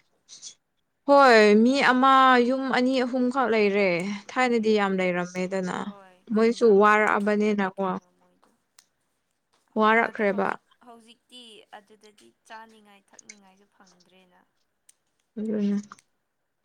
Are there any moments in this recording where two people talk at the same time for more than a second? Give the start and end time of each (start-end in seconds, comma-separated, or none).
6.3-8.0